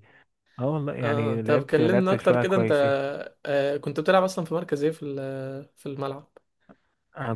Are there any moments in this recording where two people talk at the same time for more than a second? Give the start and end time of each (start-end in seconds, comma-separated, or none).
1.0-2.7